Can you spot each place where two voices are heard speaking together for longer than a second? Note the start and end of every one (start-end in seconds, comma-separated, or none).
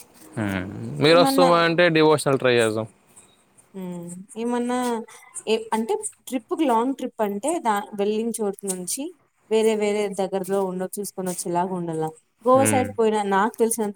none